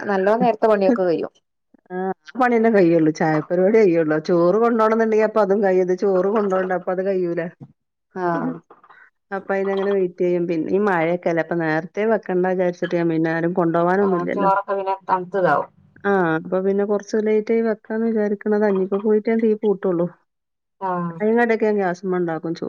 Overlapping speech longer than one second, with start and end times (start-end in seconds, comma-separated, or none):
none